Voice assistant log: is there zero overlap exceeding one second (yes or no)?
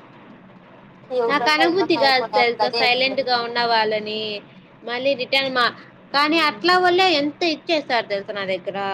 no